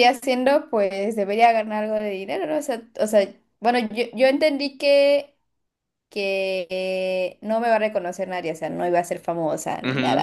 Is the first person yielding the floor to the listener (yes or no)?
yes